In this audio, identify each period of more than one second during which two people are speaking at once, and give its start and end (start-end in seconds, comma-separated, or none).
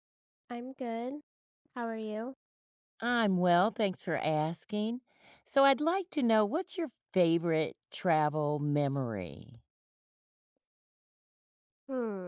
none